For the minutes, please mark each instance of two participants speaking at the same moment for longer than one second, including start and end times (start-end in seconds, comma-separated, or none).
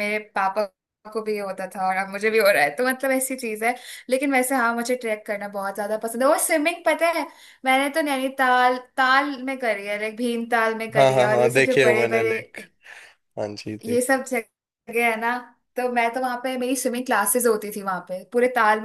11.0-12.4